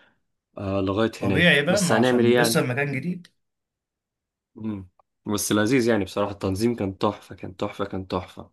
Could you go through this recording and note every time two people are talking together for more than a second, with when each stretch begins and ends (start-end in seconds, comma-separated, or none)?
1.2-2.6